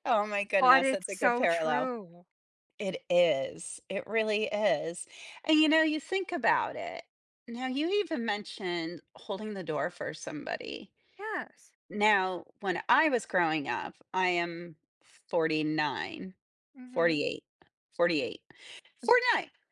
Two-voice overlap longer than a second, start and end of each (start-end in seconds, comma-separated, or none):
0.6-1.9